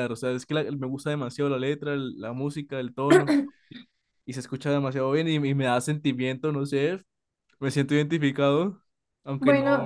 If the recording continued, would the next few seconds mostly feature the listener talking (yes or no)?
yes